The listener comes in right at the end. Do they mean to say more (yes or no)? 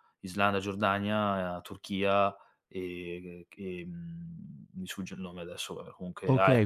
yes